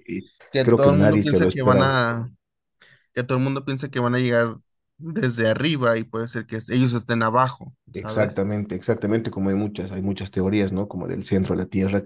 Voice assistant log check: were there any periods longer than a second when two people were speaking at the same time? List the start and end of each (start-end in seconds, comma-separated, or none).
0.5-2.0